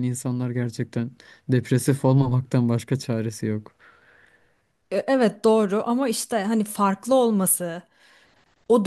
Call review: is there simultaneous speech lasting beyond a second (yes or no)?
no